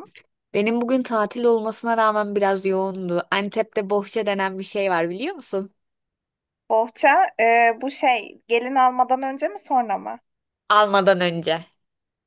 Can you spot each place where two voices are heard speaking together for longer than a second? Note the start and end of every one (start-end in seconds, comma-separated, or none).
none